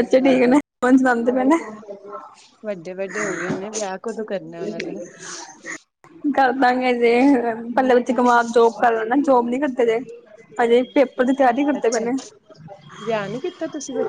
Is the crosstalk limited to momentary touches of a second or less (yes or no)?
yes